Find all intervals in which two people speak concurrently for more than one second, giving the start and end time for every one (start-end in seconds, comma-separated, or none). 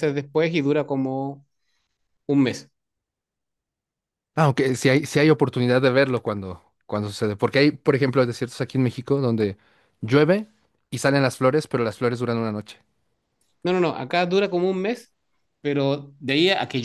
none